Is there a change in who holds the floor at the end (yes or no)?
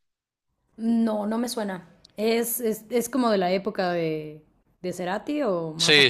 yes